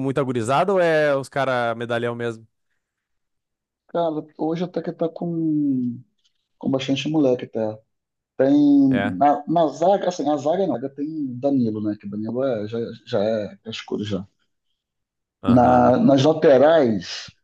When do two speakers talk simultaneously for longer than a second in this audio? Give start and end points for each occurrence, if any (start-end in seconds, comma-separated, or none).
none